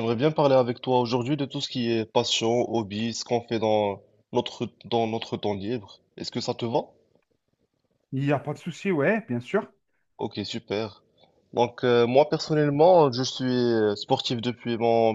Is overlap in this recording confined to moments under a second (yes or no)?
yes